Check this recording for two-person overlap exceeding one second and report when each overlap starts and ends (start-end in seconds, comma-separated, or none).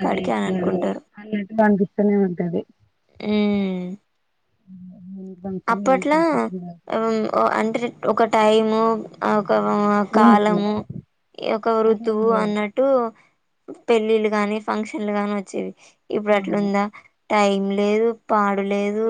none